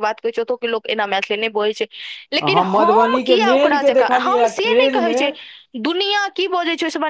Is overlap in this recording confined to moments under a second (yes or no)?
no